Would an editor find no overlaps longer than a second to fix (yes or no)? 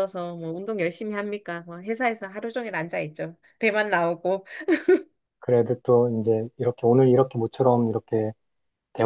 yes